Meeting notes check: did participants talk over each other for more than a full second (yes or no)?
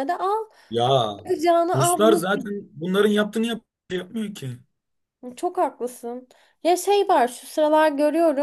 no